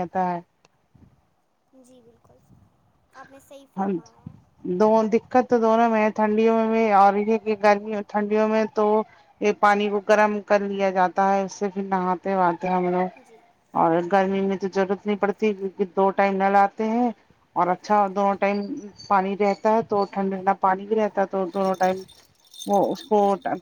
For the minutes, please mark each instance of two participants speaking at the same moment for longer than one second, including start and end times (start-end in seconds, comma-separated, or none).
none